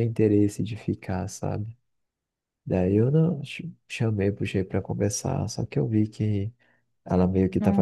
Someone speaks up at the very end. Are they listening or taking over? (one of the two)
listening